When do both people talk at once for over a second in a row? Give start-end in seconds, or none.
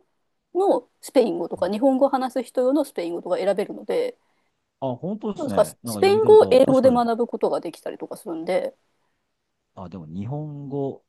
5.4-7.0